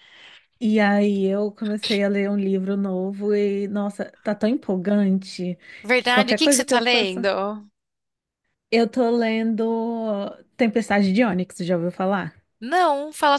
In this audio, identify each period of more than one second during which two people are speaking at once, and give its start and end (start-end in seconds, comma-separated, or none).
6.0-7.2